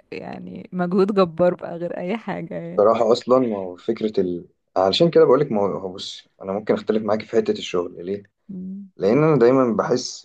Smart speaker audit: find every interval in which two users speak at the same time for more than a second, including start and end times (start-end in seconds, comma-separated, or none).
none